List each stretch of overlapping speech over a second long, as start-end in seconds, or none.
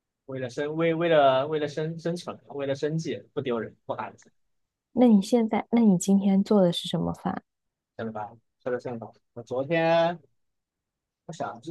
none